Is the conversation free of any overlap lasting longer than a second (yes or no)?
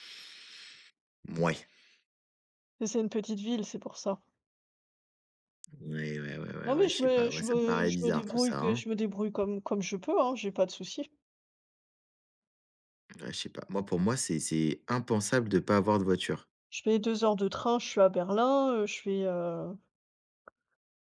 no